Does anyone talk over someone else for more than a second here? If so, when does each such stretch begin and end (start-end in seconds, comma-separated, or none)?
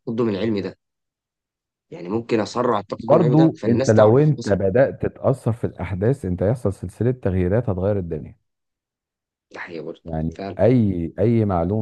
3.1-4.6